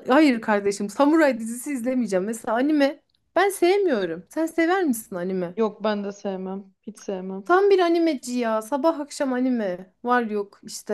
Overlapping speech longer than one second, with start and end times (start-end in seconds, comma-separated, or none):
none